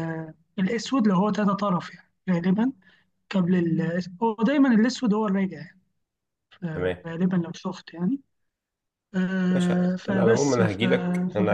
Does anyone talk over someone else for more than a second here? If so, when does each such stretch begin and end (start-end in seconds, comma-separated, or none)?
9.5-10.8